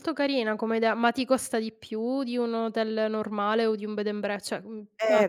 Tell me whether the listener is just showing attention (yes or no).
no